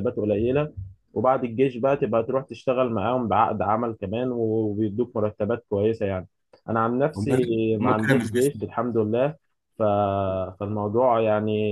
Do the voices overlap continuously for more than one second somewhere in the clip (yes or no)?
yes